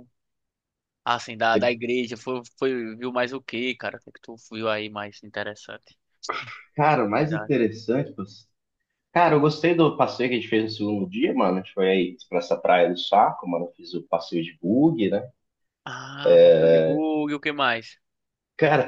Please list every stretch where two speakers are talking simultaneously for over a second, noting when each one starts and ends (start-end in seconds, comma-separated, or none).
none